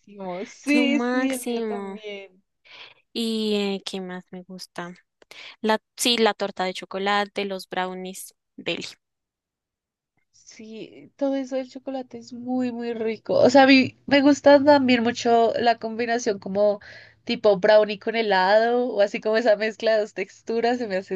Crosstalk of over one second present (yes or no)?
yes